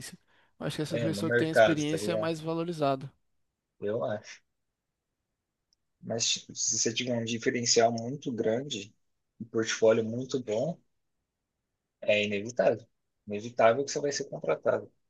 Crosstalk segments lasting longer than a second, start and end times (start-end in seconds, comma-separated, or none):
0.9-2.3